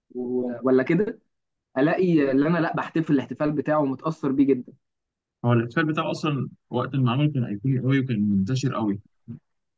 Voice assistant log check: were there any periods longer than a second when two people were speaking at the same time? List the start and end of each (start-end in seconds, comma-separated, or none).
none